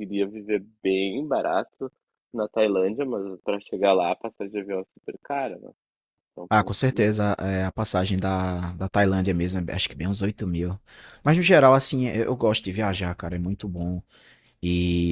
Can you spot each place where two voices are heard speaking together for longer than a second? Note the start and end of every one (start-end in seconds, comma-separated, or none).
none